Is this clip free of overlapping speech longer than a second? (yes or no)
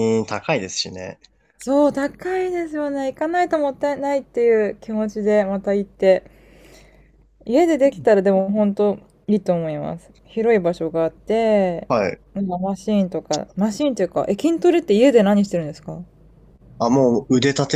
yes